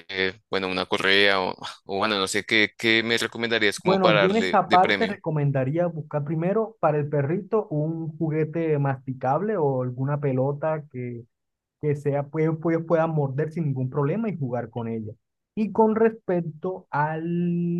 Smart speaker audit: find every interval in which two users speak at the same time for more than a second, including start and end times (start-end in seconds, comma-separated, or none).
3.8-5.2